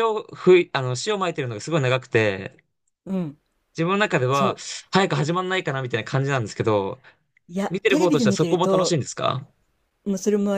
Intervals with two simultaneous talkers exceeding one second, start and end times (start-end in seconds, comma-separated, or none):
7.7-9.0